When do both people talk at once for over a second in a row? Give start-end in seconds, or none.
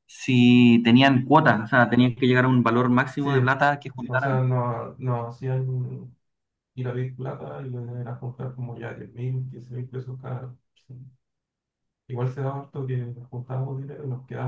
none